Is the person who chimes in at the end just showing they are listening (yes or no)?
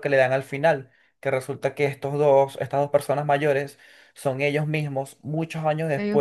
yes